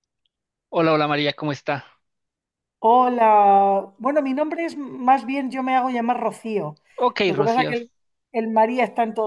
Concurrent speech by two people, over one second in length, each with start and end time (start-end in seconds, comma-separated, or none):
none